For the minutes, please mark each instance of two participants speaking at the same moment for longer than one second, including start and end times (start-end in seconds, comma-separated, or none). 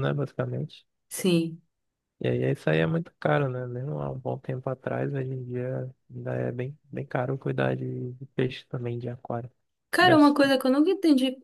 none